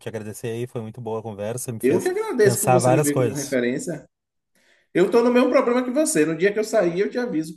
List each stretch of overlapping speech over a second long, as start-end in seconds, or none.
1.8-3.6